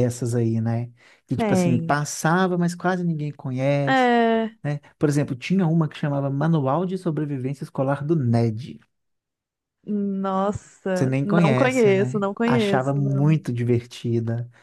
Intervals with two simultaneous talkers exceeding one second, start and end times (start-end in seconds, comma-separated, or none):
10.9-13.3